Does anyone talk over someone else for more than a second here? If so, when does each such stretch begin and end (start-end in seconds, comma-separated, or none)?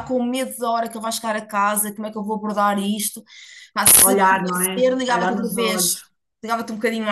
4.0-6.0